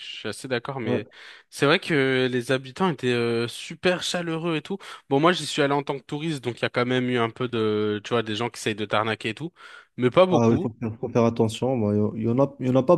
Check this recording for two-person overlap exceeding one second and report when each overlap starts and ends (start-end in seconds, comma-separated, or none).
none